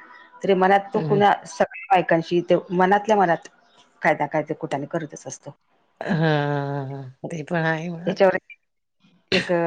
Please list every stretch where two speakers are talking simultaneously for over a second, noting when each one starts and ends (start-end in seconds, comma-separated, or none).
none